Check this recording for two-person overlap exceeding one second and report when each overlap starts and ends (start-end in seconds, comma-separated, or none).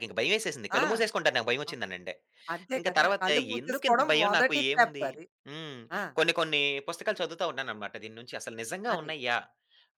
2.8-5.1